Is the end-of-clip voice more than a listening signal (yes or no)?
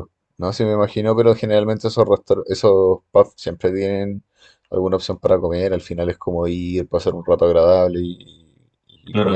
yes